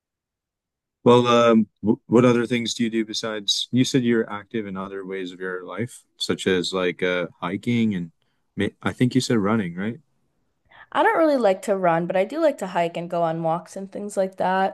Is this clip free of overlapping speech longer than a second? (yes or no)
yes